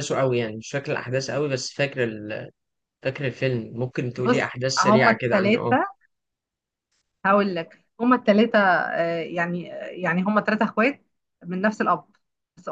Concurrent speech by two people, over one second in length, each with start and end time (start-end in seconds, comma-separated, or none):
4.2-5.8